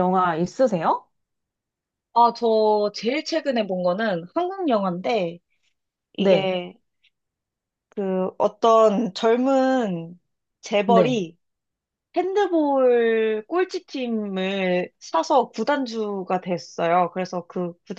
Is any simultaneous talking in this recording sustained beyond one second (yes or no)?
no